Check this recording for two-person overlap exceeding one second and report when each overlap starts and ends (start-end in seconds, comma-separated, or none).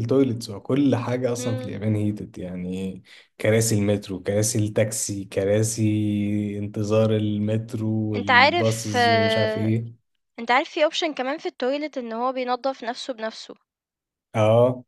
8.2-9.7